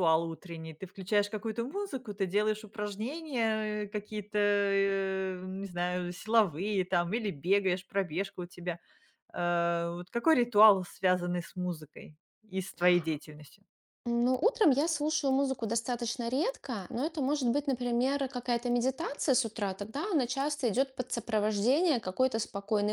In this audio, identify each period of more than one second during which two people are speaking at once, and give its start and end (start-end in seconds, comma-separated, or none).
none